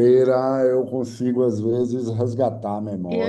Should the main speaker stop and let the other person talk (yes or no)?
yes